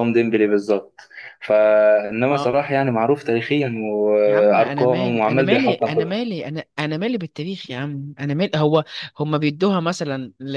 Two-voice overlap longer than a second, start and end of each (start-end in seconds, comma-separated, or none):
4.3-6.2